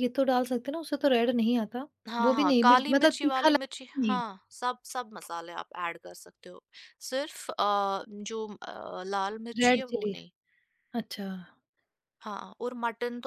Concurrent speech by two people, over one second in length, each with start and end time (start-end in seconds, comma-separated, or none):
2.2-4.2